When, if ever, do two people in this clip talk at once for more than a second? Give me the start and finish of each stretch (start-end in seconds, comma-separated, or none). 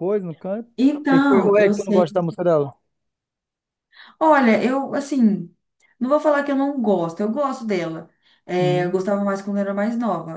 0.8-2.1